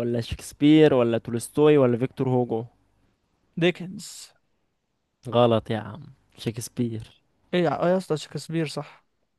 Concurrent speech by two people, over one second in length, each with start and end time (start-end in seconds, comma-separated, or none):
none